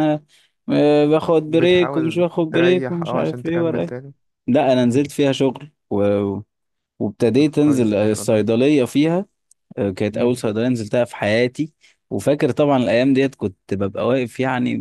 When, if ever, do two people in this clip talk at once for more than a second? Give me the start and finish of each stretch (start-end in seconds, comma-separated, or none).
1.4-4.0, 7.4-8.6